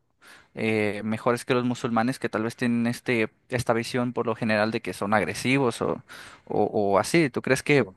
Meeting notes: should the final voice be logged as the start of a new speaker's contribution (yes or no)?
no